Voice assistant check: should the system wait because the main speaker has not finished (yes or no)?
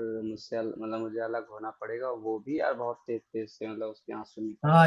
no